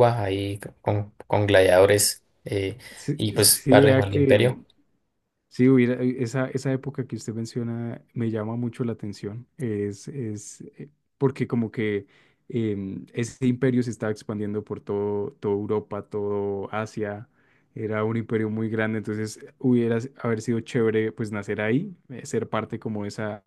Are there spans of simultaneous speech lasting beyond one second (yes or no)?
yes